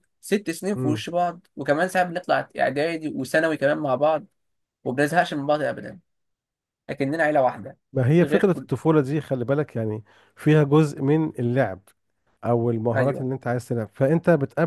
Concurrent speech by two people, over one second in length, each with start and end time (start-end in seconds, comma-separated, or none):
none